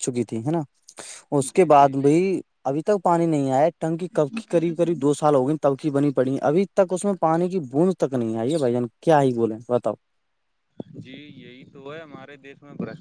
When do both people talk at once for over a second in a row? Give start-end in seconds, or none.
none